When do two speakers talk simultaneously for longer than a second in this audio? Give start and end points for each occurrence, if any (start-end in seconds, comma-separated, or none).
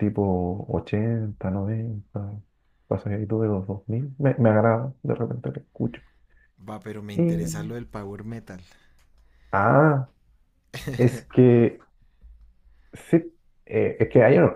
none